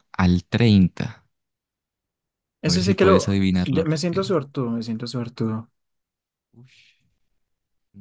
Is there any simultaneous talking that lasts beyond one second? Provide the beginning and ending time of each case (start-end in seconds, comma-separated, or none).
2.6-4.3